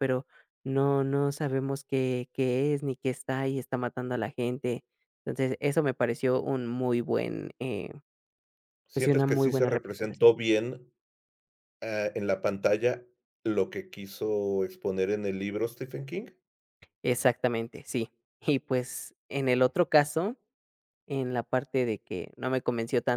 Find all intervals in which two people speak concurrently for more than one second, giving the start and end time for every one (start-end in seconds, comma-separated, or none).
8.9-10.3